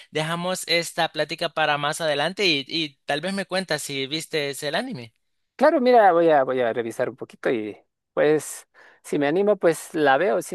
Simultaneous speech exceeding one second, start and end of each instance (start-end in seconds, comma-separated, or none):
none